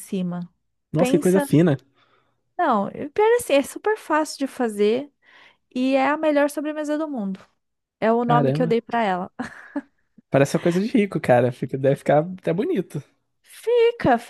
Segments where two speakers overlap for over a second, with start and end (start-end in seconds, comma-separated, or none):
none